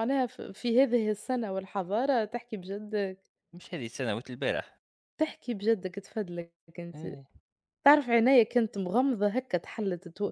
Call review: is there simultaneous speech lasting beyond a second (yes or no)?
no